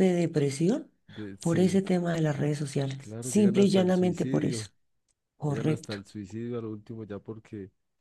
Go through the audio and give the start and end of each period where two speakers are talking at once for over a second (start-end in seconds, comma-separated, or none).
3.0-4.7